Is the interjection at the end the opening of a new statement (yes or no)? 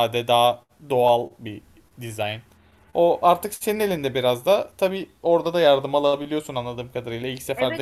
yes